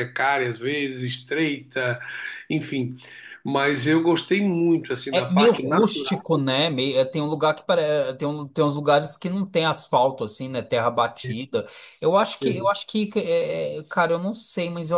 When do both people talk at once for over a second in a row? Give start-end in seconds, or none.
5.1-6.3